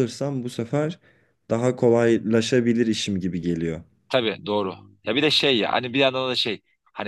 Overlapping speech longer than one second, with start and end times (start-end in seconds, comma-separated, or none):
none